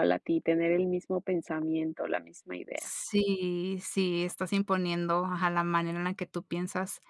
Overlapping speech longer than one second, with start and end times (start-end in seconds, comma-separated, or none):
none